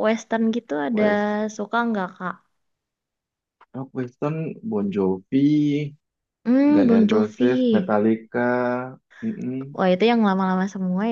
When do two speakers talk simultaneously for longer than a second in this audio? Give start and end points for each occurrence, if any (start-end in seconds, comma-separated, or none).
6.8-8.0